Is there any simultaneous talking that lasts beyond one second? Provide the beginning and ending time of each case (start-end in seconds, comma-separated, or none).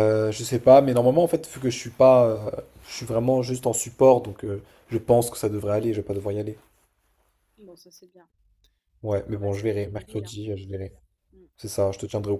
9.1-10.3